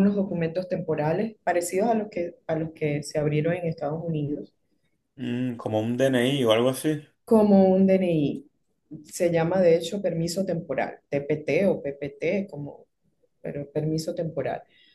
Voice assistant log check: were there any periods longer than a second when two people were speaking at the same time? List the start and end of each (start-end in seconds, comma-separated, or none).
none